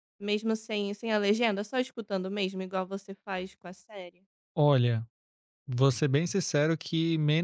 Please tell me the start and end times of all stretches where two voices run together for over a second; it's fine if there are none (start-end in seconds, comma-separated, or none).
none